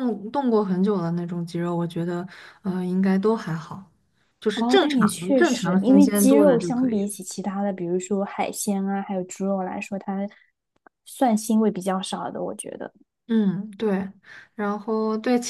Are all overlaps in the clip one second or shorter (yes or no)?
no